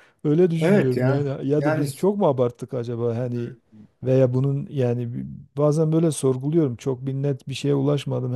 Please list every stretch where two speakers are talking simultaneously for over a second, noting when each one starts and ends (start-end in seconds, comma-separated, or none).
0.6-1.9